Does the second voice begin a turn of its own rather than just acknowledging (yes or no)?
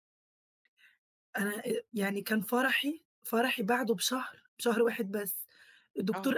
no